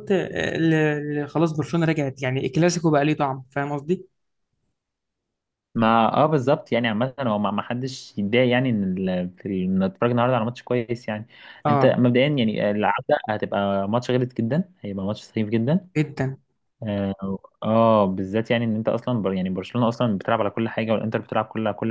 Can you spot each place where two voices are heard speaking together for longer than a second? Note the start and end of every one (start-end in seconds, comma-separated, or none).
none